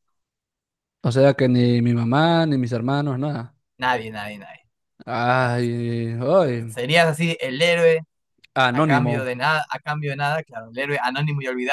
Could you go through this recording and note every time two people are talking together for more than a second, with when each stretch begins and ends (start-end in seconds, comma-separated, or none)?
none